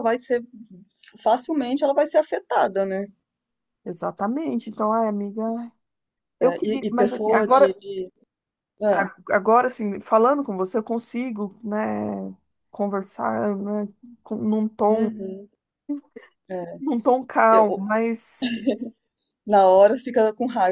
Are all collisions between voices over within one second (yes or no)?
no